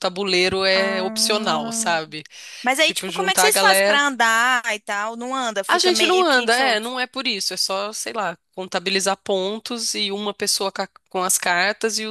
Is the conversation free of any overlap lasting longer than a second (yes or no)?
no